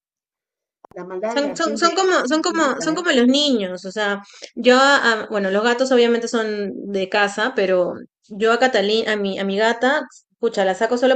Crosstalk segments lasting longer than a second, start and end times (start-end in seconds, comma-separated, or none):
1.2-3.0